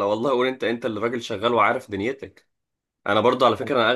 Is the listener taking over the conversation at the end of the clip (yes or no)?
no